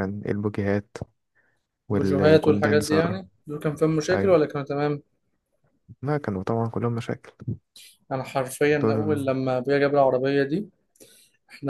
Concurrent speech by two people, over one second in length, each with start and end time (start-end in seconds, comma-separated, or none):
1.9-3.2